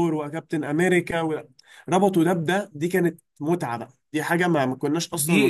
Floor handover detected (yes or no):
yes